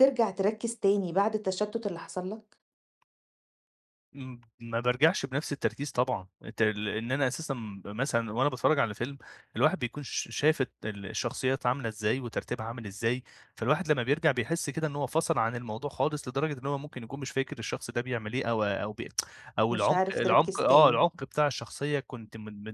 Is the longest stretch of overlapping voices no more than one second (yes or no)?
no